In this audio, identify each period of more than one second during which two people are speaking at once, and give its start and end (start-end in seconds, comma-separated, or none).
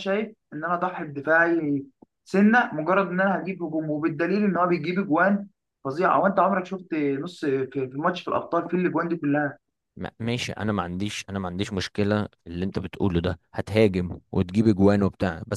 none